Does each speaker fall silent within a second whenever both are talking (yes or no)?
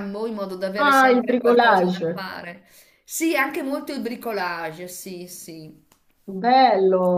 no